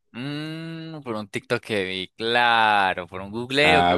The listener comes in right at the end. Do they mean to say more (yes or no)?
yes